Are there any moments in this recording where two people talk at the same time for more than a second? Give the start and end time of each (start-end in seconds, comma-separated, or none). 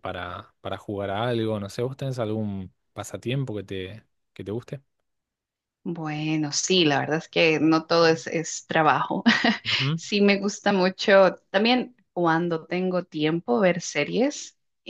none